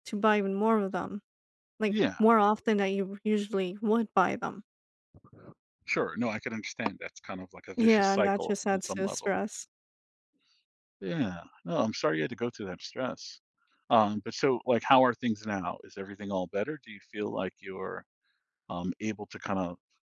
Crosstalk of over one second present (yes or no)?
yes